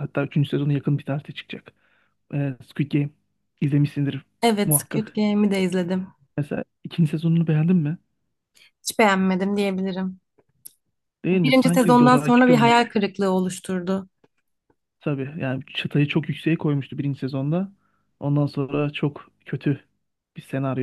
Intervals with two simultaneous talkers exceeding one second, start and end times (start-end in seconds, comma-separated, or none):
11.4-12.9